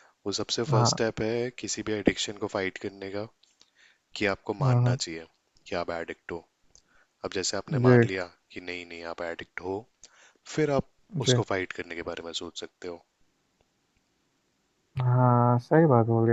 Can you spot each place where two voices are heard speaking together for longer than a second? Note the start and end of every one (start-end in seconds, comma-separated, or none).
none